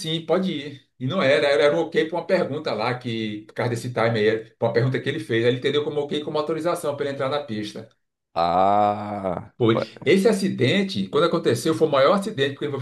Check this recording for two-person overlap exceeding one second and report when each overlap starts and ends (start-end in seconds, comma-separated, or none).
none